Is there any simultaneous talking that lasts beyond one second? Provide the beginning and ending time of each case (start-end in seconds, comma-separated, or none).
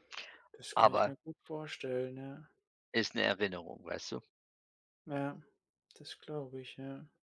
none